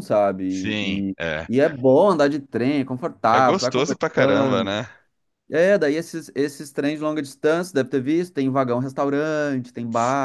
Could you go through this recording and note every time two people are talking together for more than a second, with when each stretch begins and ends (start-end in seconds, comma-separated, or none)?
3.3-4.8